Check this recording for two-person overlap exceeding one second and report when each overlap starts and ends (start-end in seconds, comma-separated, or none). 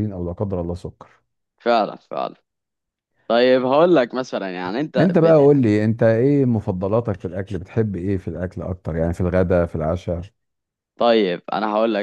none